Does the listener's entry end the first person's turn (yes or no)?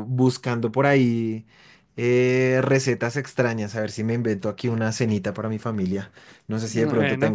no